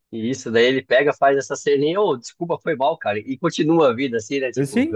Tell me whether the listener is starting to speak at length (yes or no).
yes